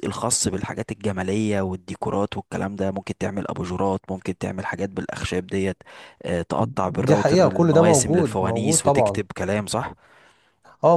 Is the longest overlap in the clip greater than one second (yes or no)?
yes